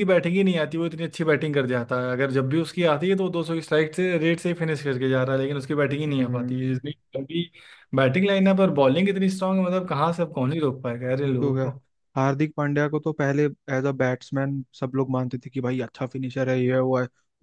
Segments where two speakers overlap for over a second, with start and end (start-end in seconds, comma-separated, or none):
none